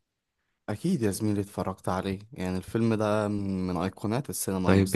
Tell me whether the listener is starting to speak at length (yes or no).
yes